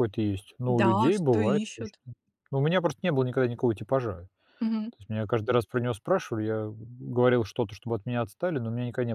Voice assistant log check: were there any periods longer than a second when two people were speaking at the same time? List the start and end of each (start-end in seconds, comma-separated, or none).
0.7-2.0